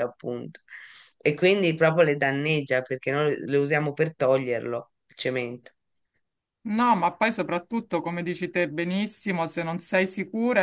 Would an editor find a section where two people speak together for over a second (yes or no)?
no